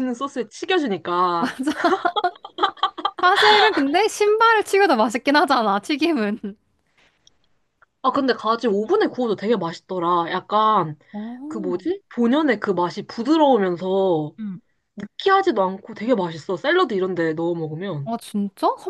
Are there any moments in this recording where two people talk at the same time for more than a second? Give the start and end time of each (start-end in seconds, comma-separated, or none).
none